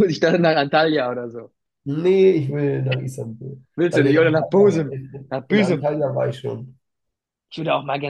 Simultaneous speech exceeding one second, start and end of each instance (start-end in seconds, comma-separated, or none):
3.8-6.0